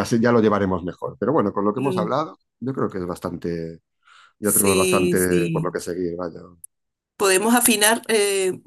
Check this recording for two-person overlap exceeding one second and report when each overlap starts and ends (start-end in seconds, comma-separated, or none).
4.4-5.7